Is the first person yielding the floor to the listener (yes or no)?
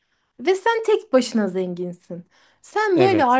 no